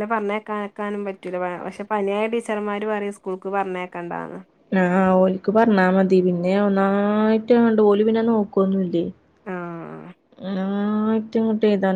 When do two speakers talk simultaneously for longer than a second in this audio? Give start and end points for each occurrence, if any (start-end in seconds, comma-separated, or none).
none